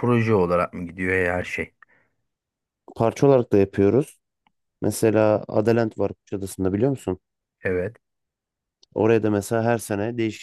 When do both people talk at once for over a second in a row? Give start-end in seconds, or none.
none